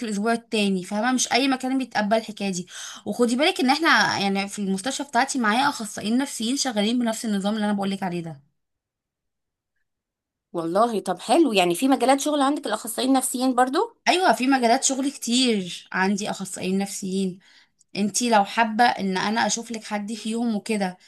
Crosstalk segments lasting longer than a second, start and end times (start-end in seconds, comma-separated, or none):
none